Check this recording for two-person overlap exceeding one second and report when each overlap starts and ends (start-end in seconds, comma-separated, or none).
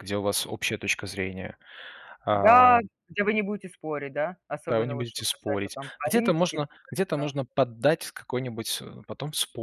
4.7-7.3